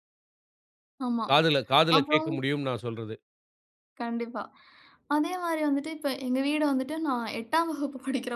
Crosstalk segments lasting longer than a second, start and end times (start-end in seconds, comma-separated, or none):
none